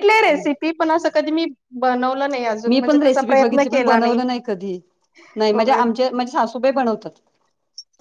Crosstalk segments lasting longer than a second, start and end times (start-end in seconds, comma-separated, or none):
2.7-4.2